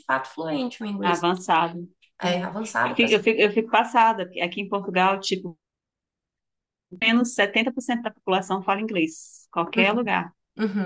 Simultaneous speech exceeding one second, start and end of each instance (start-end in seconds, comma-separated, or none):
none